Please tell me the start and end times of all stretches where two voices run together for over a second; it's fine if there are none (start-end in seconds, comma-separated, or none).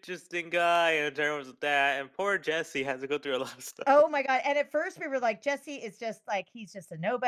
none